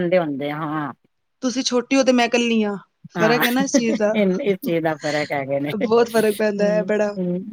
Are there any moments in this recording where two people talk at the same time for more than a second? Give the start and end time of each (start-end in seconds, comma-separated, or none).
4.6-6.8